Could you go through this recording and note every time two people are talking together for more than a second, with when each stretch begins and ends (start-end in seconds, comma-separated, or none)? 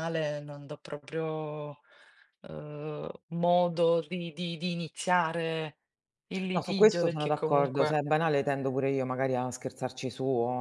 6.5-8.0